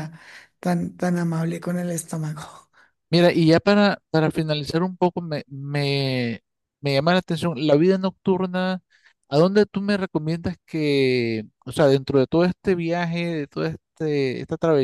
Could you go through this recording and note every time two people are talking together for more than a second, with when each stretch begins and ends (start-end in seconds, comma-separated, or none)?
none